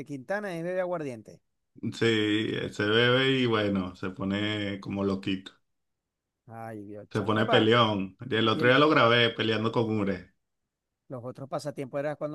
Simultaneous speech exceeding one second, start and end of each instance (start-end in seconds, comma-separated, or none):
none